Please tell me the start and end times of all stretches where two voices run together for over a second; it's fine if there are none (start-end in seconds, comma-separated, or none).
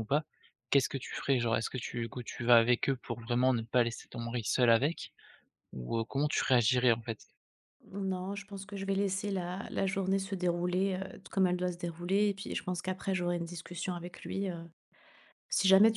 none